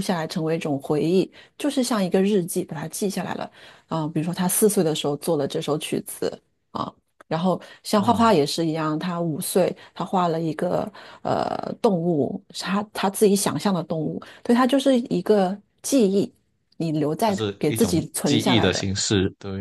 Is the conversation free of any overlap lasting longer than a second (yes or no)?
no